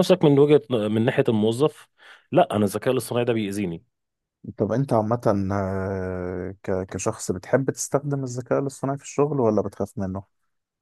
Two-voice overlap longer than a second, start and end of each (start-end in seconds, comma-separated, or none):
none